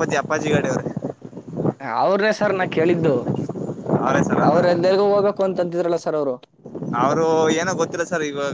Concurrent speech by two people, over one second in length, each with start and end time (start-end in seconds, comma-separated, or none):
none